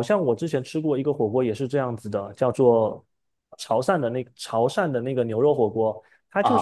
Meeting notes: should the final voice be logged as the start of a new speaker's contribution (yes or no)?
yes